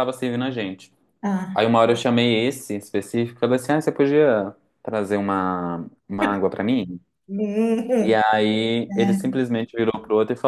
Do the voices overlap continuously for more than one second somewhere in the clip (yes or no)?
no